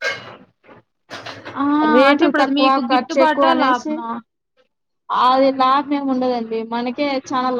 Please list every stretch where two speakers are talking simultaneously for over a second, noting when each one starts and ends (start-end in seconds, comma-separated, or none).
2.1-3.9